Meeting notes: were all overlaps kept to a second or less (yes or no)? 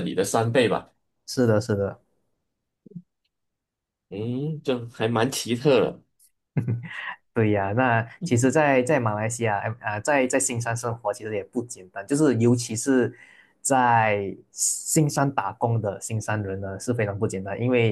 yes